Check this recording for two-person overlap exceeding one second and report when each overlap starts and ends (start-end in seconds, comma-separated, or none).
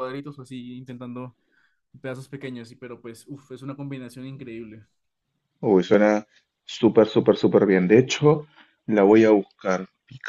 none